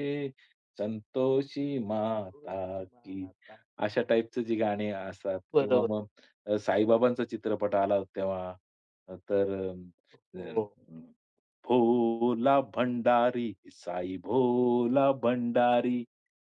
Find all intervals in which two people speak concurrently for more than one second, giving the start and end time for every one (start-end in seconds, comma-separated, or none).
2.0-3.2